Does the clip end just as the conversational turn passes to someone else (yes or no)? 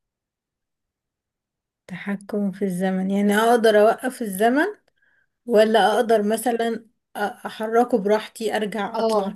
yes